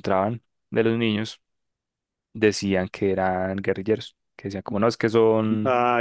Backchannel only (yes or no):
yes